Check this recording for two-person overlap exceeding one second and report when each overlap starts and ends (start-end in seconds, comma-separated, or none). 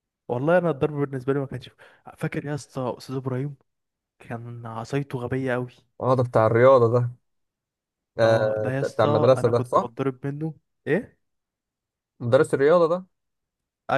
8.2-9.9